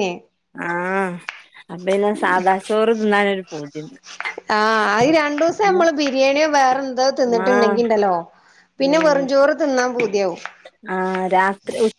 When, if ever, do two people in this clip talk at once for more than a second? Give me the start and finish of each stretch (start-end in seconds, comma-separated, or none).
none